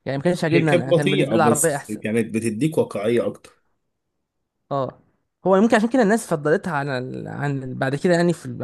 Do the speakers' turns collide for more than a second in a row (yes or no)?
yes